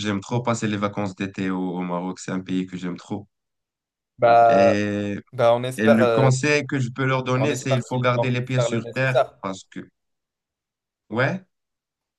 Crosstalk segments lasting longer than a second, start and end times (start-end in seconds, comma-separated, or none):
7.4-9.4